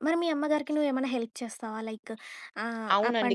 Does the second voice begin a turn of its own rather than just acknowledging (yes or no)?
yes